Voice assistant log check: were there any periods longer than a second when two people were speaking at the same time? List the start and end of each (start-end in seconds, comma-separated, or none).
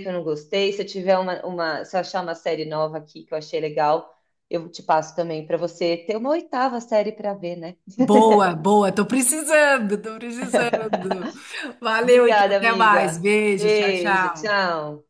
12.0-14.6